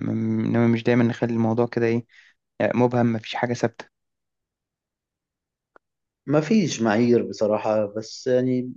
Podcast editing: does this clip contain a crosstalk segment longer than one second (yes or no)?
no